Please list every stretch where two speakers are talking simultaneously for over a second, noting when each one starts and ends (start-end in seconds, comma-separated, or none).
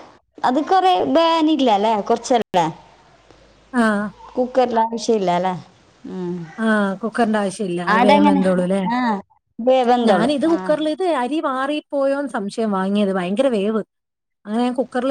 none